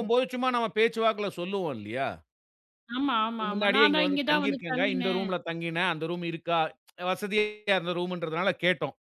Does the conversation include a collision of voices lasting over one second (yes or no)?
yes